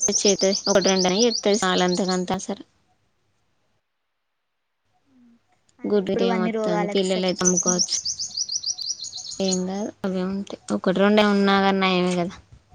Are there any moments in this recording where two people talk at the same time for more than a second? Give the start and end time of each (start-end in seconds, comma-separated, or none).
5.9-8.0